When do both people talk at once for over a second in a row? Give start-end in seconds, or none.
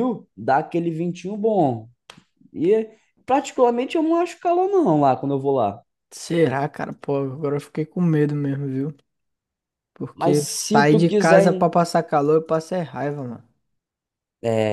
10.1-11.7